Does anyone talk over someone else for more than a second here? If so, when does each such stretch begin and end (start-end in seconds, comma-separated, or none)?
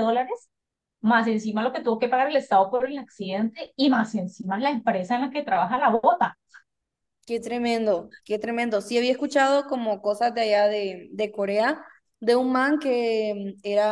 none